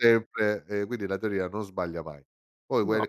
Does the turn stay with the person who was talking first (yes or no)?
yes